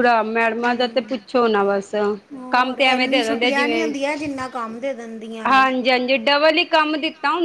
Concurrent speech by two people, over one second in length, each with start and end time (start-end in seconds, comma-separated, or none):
2.5-3.9